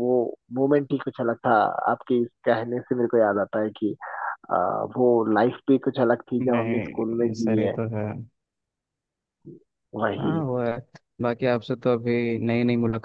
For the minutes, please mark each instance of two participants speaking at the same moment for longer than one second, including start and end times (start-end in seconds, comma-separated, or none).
6.4-7.8